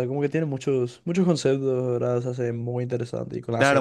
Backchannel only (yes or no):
no